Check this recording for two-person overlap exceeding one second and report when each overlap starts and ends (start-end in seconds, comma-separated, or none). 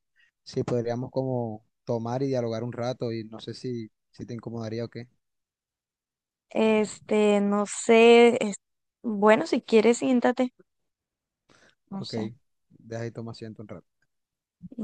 none